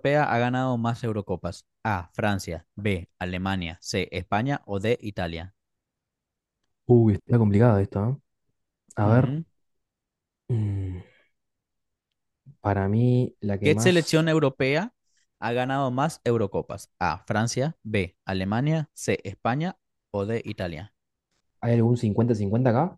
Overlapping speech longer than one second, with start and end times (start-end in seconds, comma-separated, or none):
none